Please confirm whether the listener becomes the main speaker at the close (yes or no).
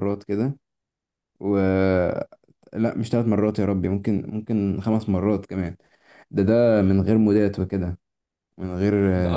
yes